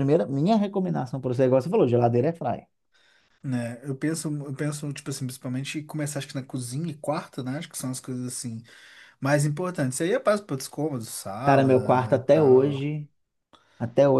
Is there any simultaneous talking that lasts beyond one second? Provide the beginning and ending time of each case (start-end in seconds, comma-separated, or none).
11.4-12.8